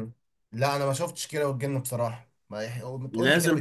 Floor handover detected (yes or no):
yes